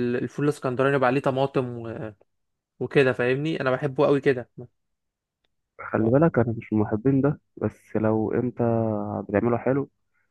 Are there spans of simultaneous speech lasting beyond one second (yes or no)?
no